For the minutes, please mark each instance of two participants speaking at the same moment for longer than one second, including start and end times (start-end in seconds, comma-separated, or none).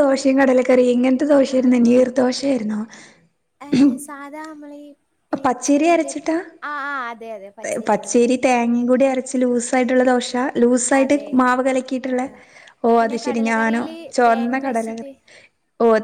13.0-15.1